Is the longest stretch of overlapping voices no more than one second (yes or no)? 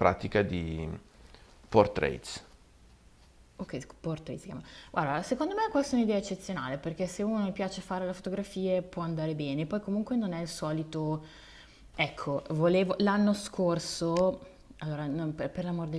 yes